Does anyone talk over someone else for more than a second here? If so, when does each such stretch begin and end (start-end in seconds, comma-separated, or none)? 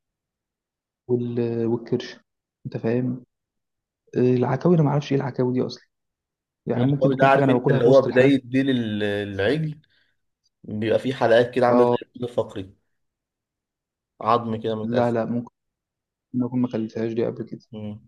6.8-8.3